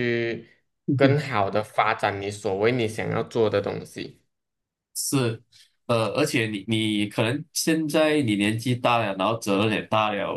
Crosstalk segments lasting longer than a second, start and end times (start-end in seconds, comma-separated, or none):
none